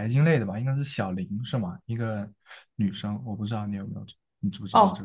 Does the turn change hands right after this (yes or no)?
yes